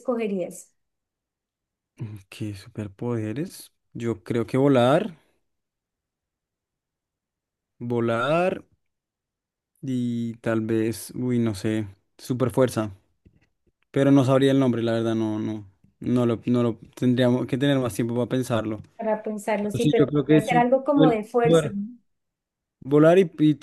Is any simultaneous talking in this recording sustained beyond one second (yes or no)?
yes